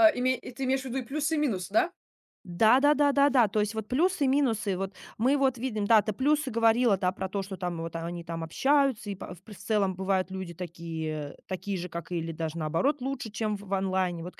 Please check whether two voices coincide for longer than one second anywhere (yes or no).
no